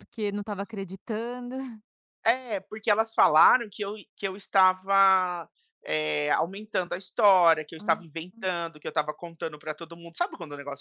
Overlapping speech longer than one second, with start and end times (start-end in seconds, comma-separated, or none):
none